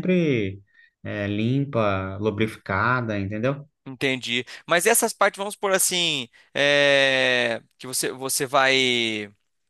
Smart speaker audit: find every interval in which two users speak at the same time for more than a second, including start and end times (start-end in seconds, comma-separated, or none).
none